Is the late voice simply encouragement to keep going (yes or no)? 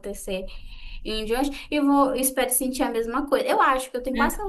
yes